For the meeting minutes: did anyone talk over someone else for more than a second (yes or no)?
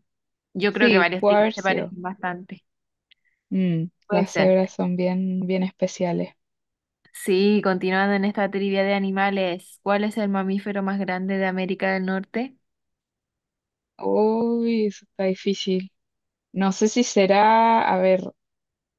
yes